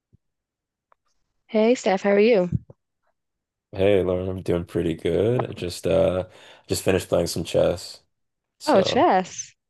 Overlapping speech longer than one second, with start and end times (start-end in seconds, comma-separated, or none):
none